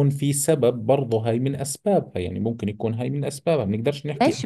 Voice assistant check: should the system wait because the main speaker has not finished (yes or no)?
no